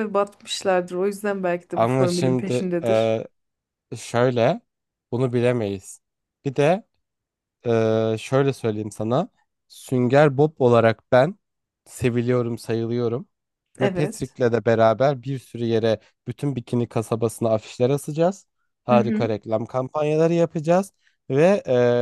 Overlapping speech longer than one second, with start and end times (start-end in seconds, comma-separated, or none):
1.7-3.1